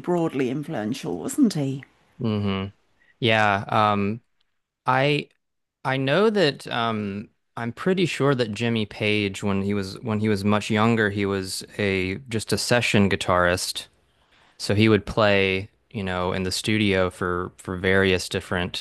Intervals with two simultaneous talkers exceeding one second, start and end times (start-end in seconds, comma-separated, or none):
none